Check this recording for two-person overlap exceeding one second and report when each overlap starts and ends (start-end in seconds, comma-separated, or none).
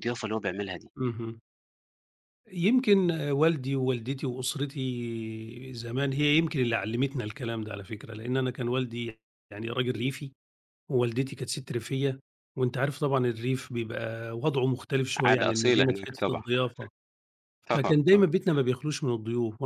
15.2-16.4